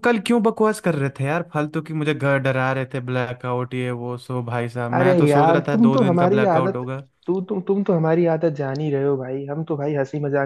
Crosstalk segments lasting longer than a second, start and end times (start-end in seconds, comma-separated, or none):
4.9-6.8